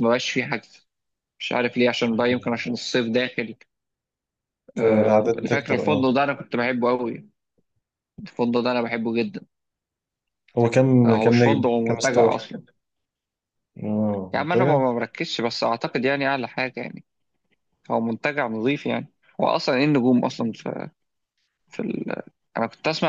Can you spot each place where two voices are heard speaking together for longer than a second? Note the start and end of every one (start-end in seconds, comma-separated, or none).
4.8-6.0, 11.1-12.3